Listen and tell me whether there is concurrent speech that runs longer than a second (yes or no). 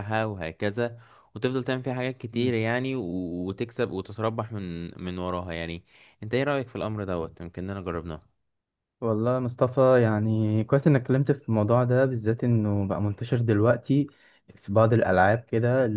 no